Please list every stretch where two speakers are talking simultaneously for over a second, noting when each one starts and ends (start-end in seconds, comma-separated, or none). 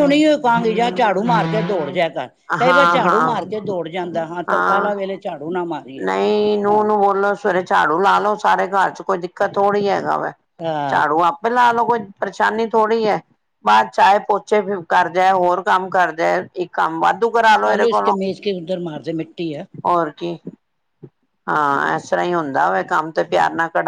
none